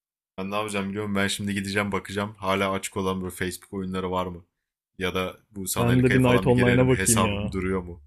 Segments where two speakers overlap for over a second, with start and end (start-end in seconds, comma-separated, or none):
5.8-7.5